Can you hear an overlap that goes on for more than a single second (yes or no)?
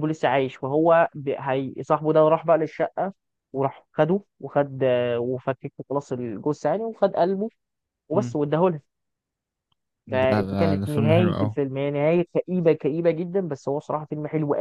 yes